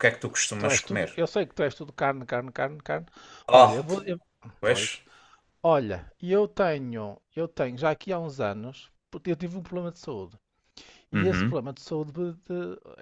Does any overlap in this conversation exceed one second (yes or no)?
no